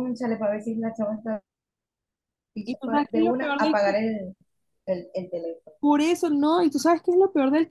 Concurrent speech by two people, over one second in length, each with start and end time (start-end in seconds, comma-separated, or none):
2.6-4.0